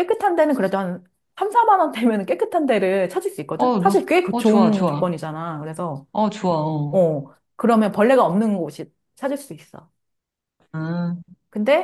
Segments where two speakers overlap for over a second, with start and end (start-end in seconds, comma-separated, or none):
3.6-5.1